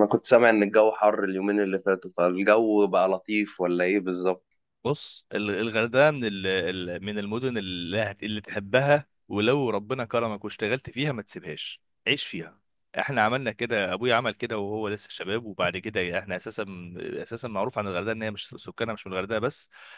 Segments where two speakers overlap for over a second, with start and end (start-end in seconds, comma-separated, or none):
none